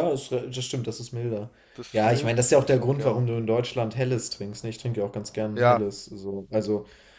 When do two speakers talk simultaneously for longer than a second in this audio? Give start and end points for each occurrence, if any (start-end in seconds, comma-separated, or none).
1.9-3.3